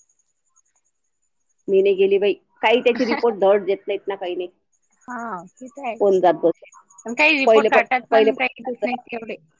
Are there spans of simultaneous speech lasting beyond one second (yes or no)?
yes